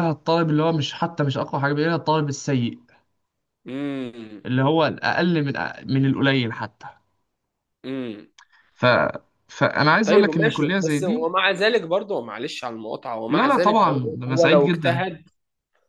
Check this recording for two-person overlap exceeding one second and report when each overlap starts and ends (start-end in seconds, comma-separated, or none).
10.1-11.3, 13.3-15.0